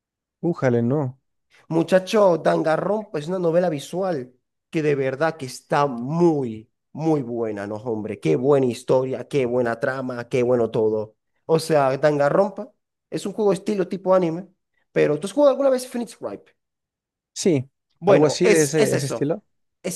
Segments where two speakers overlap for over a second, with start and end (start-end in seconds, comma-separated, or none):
18.1-19.4